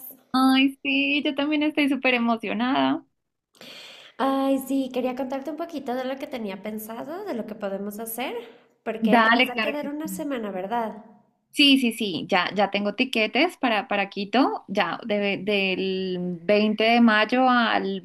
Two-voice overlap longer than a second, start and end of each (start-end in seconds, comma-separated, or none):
9.0-10.3